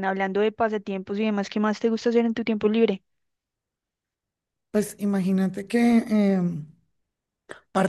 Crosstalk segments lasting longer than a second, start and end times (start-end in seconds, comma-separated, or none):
none